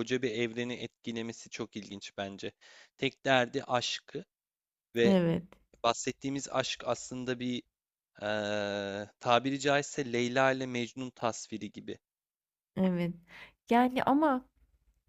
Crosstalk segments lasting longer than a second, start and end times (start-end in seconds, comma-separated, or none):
none